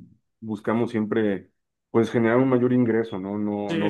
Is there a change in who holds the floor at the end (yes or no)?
yes